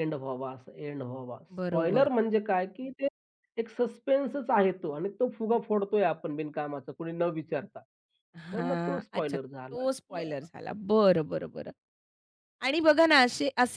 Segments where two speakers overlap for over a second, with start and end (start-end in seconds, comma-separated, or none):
8.5-10.2